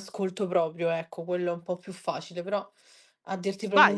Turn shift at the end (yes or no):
yes